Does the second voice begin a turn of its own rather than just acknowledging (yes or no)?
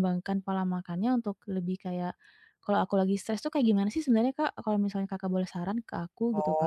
yes